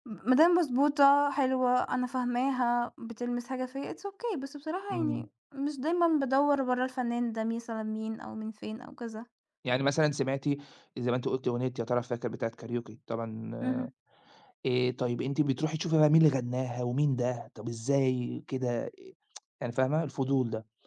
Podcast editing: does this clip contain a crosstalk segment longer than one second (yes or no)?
no